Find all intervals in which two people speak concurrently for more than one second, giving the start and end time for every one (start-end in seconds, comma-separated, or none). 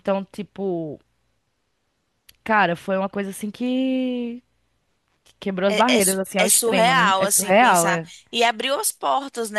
5.7-8.1